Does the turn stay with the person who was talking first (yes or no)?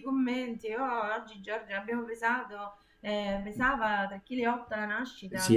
no